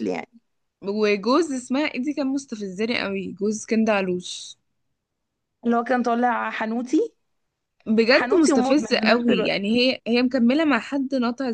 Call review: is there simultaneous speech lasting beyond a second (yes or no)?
yes